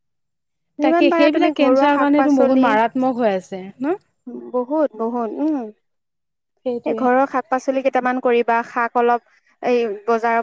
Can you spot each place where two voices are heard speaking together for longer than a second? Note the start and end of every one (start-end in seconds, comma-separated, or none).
0.8-2.6